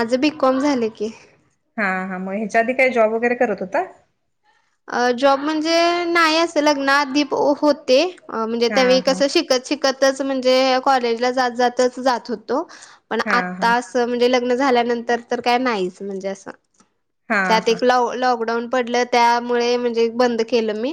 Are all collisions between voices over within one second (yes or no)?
yes